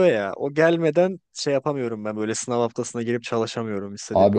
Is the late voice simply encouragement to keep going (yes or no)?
no